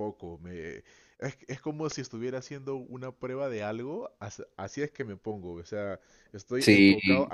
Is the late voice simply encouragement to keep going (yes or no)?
yes